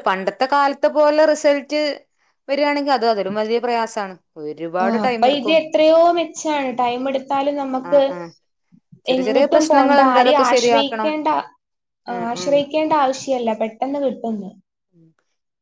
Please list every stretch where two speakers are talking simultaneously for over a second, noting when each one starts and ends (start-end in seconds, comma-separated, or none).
9.2-11.1